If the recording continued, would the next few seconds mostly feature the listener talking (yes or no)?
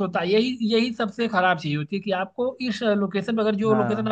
no